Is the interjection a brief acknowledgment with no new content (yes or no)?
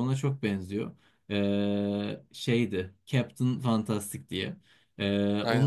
yes